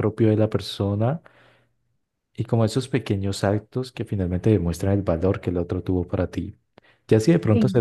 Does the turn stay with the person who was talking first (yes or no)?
yes